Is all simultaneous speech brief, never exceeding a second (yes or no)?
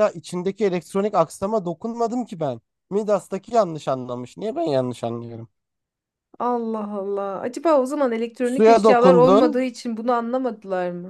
no